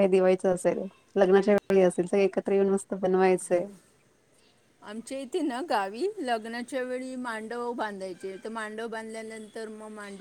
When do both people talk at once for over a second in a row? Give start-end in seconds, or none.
none